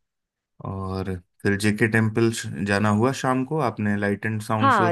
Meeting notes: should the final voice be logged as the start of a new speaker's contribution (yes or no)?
yes